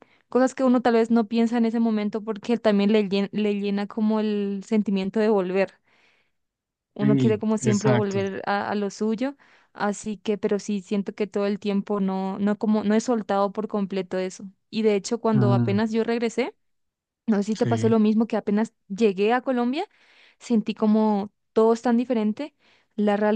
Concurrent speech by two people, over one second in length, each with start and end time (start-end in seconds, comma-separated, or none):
7.0-8.2